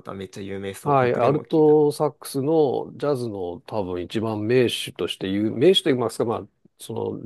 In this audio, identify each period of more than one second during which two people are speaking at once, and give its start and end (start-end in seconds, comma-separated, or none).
0.8-2.0